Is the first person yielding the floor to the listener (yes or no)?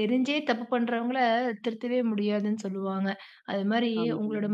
no